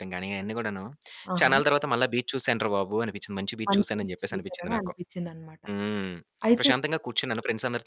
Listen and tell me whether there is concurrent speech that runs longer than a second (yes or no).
yes